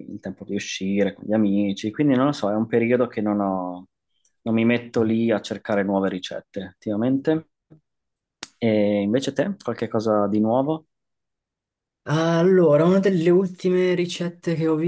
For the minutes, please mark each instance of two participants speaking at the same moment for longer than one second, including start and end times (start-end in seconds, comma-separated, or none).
none